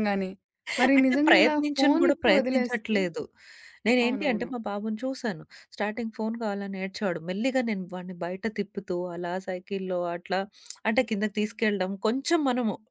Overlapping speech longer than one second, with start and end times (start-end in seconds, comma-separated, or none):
1.0-3.0